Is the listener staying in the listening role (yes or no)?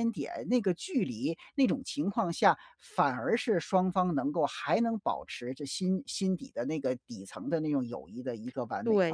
no